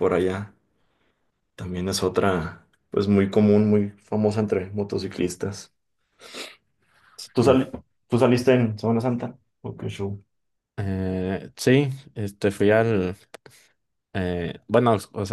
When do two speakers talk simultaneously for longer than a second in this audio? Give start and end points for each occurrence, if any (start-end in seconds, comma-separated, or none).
none